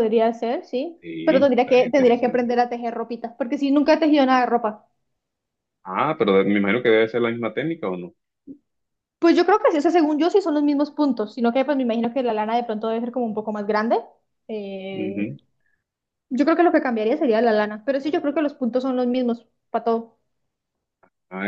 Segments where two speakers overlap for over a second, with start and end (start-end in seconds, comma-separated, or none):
1.0-2.5